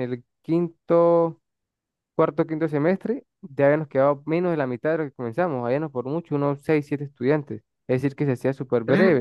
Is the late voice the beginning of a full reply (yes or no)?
yes